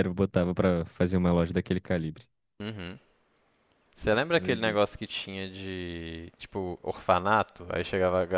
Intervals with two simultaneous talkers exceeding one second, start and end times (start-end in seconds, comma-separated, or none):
none